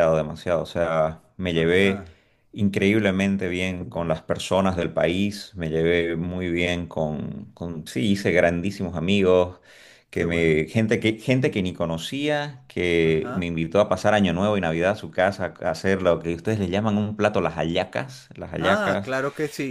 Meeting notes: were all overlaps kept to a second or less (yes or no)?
yes